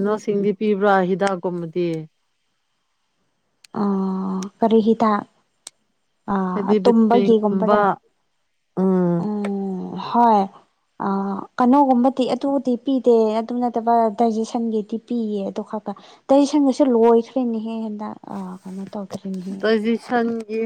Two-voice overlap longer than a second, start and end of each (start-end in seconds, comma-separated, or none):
6.5-7.8